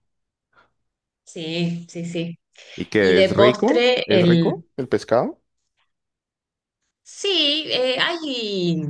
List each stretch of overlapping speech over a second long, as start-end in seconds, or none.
3.0-4.5